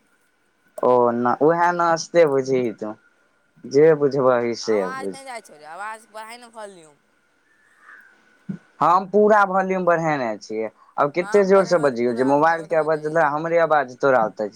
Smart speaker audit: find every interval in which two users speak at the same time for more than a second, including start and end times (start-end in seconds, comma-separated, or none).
11.2-13.3